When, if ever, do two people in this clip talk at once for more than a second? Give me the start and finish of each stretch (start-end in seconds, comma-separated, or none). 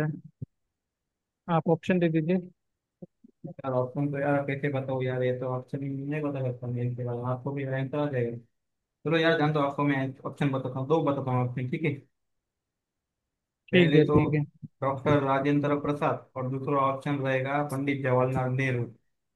none